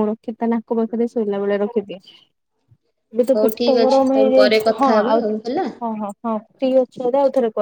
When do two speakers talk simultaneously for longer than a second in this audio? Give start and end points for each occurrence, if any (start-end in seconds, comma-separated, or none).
3.4-5.2